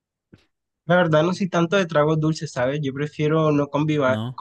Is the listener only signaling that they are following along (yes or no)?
yes